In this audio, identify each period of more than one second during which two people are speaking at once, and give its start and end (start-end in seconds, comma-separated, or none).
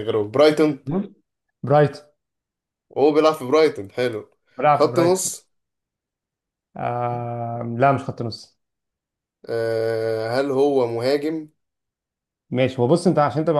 none